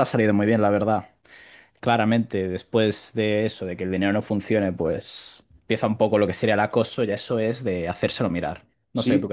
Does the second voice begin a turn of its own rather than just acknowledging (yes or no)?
yes